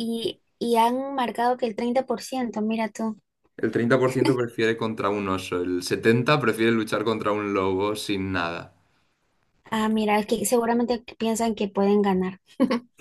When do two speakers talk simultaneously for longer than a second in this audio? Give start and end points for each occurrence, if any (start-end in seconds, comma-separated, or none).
none